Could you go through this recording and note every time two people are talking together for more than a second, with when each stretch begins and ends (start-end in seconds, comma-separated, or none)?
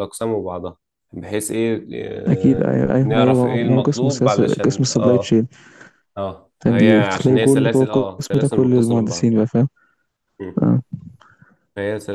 2.3-5.3, 6.6-9.3